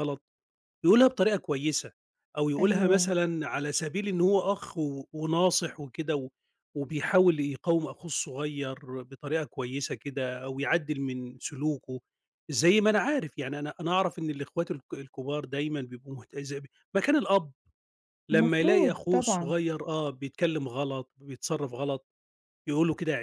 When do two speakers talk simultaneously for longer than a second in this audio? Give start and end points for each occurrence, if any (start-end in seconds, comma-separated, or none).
18.3-19.6